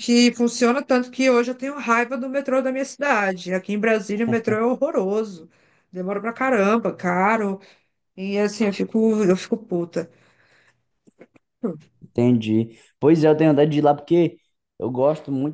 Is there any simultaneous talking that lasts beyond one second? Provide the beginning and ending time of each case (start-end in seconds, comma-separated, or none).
none